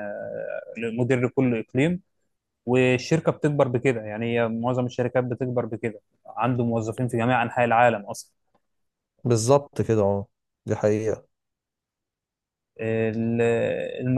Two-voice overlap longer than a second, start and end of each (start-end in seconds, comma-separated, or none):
none